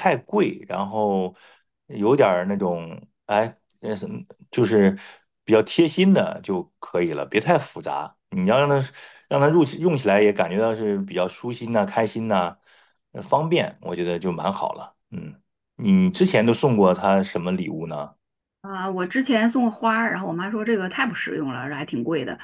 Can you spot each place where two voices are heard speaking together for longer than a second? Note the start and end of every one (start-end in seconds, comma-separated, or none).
none